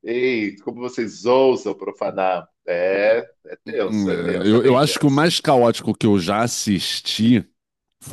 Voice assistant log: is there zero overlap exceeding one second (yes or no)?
no